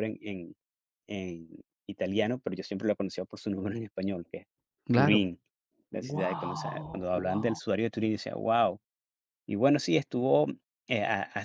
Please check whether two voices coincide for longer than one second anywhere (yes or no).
yes